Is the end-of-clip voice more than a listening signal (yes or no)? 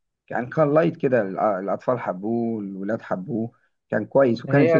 yes